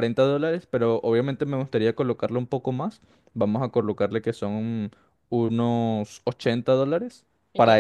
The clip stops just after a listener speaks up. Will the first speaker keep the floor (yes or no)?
yes